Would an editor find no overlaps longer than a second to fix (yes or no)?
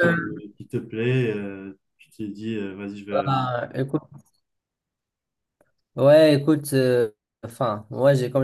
yes